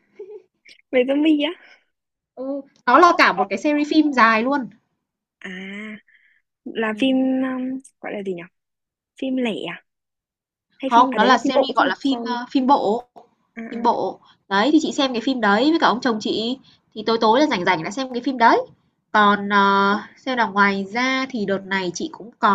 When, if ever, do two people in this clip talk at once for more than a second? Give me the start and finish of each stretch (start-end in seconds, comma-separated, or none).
10.8-12.4